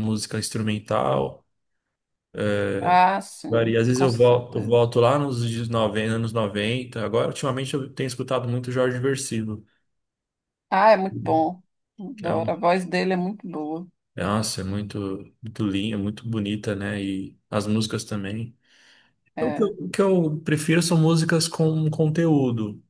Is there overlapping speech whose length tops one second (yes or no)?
yes